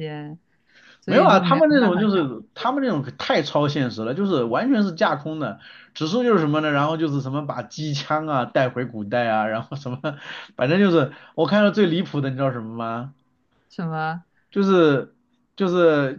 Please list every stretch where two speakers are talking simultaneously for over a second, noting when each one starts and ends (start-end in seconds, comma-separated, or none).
1.1-2.3